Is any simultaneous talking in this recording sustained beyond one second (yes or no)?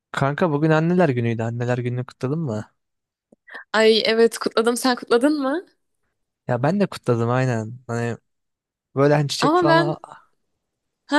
no